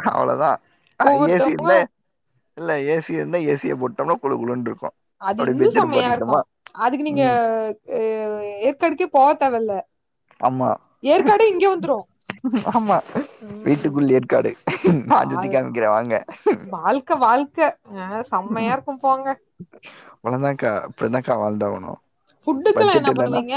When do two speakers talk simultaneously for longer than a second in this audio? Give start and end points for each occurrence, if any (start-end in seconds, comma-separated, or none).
none